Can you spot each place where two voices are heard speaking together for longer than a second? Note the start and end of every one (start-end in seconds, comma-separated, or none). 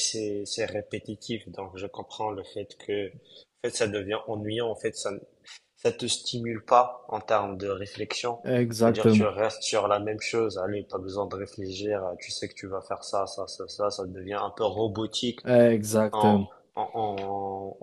none